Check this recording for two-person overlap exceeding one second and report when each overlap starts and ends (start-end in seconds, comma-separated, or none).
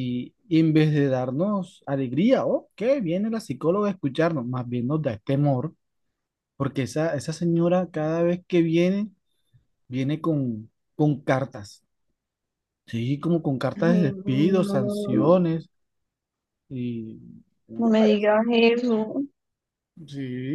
13.8-15.4